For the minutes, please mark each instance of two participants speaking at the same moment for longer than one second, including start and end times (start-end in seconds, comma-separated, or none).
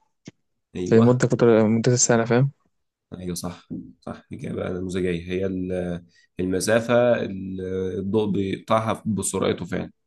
none